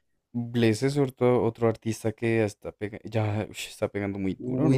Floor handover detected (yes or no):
yes